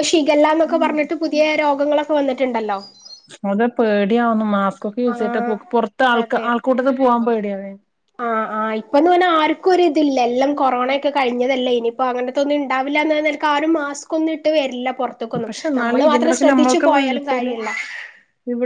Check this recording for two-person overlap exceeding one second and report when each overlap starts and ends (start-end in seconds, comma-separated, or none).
15.5-17.5